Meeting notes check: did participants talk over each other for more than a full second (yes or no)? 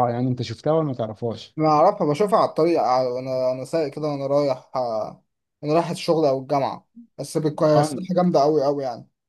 no